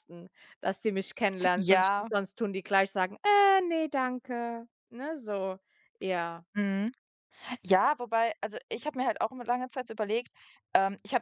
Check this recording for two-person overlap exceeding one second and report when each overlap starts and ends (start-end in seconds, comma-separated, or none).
none